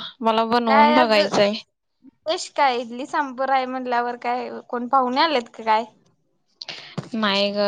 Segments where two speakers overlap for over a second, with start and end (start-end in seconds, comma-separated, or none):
none